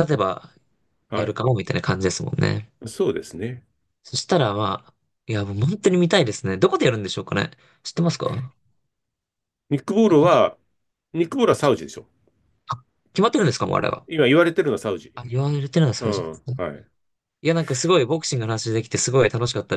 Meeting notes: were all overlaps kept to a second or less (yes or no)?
yes